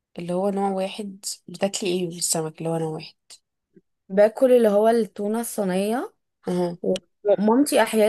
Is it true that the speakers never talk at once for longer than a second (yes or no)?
yes